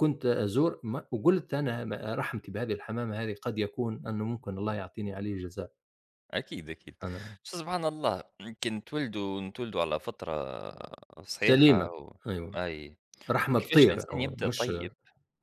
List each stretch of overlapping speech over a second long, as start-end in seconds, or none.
13.5-14.7